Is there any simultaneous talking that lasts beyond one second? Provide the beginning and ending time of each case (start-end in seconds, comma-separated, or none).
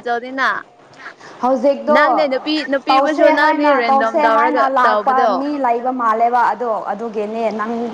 2.9-5.3